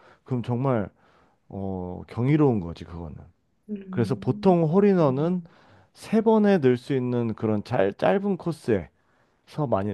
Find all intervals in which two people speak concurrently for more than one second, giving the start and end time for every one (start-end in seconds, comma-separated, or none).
3.9-5.4